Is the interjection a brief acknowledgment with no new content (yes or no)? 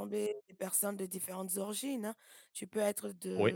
yes